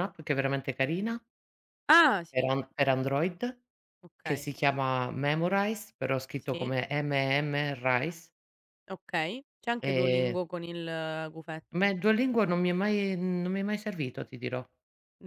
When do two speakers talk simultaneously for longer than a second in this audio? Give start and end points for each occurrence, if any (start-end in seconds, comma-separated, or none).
none